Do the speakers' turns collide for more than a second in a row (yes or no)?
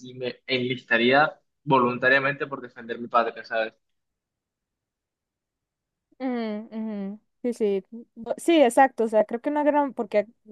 no